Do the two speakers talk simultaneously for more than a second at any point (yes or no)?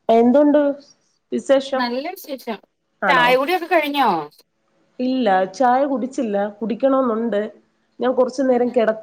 no